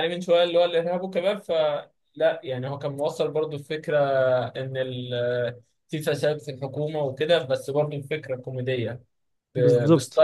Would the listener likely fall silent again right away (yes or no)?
yes